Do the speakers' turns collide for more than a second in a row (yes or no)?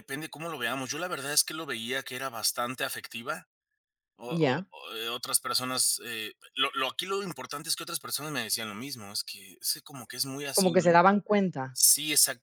no